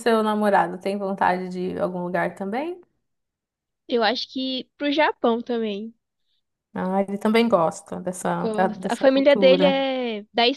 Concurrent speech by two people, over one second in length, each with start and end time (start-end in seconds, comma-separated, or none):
8.4-9.8